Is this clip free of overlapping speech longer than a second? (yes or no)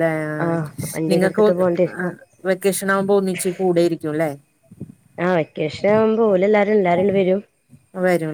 yes